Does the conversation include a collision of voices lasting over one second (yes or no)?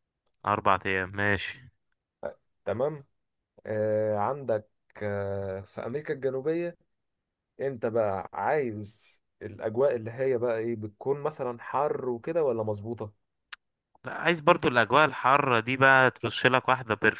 no